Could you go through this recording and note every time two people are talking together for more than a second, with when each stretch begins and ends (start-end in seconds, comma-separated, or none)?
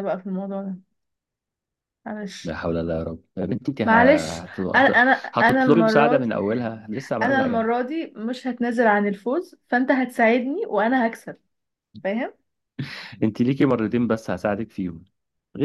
3.8-6.3